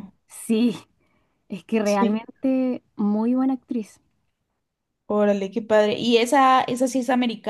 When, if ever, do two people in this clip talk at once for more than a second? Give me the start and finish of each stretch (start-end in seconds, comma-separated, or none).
none